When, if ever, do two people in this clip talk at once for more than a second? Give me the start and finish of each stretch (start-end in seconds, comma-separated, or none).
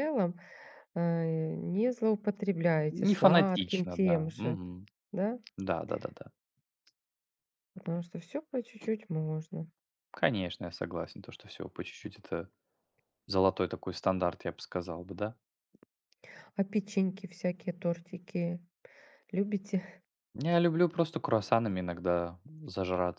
2.9-4.6